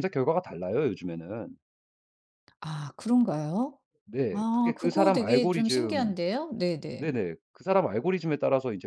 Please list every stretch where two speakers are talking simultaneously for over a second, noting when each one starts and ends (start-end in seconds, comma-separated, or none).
4.3-6.0